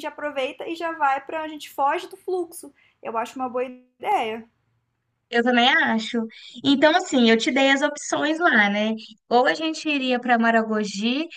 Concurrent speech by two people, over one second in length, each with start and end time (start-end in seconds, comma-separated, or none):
none